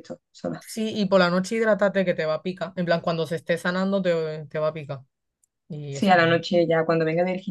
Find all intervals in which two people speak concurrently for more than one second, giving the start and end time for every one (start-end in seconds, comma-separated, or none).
none